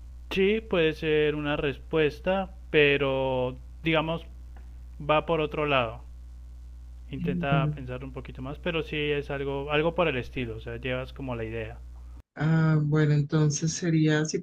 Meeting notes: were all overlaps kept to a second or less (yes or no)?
yes